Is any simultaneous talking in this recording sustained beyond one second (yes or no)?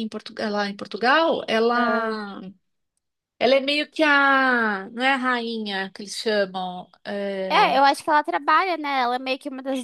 no